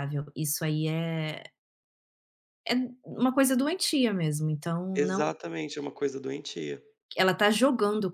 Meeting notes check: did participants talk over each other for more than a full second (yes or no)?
no